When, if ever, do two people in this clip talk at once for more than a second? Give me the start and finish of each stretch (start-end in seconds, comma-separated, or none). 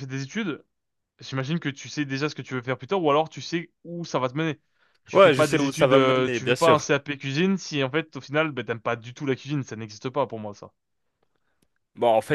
5.1-6.9